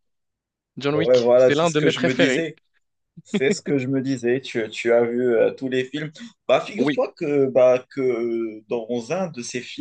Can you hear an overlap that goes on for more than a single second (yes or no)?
yes